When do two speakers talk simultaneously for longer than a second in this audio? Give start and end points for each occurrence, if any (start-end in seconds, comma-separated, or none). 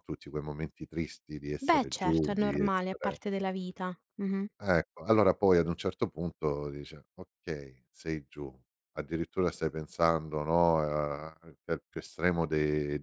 1.6-3.2